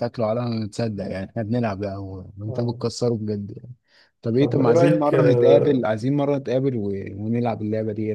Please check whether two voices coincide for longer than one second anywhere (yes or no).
yes